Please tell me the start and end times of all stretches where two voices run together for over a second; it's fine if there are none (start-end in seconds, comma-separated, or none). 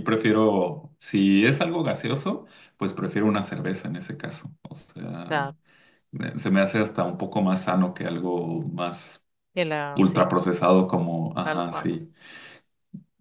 none